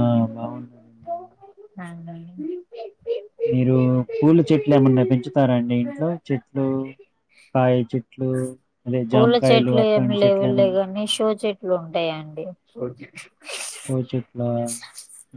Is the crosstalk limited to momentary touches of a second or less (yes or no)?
no